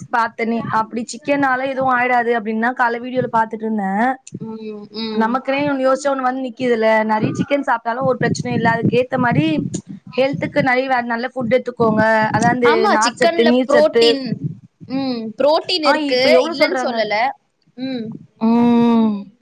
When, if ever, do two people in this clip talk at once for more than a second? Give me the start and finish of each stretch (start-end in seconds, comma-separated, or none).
none